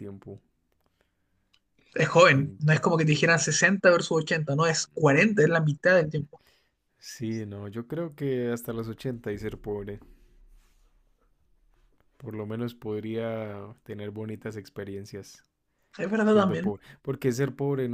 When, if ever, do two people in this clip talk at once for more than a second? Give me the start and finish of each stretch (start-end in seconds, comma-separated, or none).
none